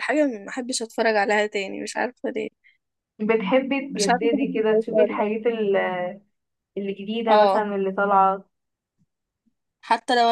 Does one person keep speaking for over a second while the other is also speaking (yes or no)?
yes